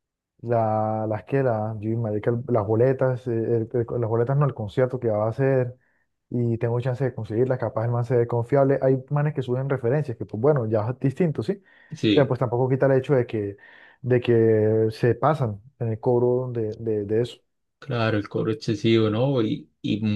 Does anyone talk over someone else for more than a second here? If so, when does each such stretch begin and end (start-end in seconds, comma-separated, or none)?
none